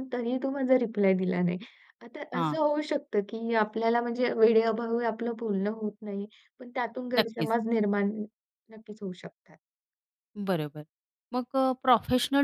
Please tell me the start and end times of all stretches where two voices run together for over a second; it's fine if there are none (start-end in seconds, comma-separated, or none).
none